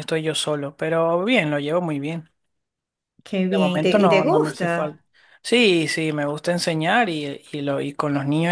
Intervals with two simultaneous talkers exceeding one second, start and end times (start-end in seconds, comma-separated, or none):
3.5-5.0